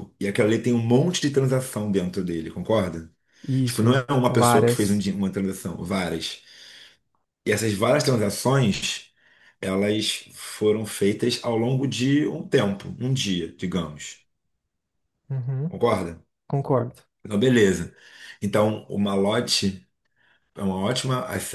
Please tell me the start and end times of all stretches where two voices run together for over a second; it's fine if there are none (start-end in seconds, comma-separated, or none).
3.6-5.0